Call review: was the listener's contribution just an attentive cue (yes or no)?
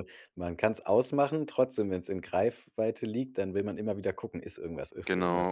no